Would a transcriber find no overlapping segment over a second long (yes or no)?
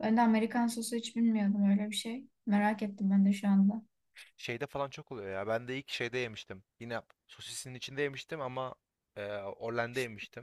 yes